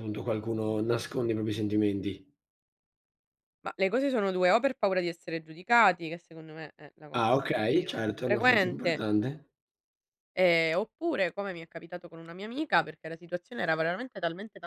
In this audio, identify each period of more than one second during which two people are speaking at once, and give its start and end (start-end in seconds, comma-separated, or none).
7.1-9.0